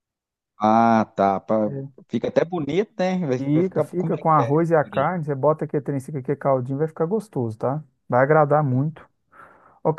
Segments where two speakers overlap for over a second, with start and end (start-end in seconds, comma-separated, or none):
3.4-5.1